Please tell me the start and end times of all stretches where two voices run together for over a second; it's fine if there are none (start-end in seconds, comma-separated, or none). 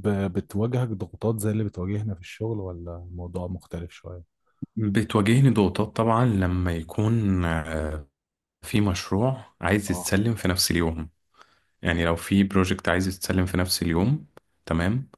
none